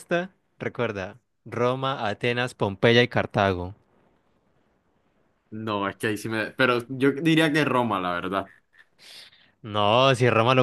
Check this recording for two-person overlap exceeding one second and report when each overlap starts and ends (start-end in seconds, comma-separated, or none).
none